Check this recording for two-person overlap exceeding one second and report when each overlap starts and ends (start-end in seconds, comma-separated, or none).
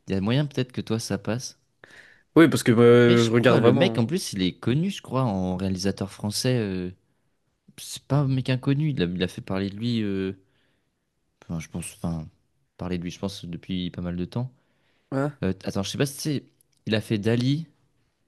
2.9-4.1